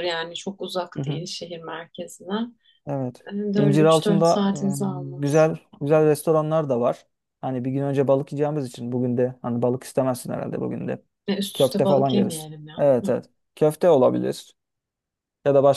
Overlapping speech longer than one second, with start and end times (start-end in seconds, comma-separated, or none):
3.2-5.5, 11.5-13.1